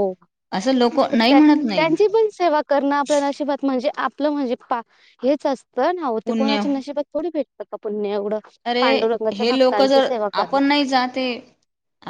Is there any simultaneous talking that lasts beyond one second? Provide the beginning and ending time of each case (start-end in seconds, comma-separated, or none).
none